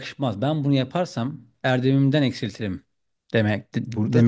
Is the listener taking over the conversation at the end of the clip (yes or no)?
yes